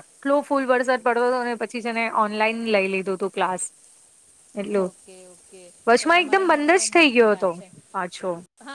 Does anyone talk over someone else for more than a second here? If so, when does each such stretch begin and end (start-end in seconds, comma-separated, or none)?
6.0-7.5